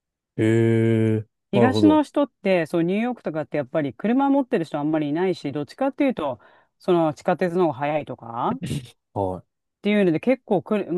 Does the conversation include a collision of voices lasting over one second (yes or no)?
no